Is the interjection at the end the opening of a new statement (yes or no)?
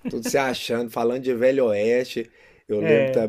no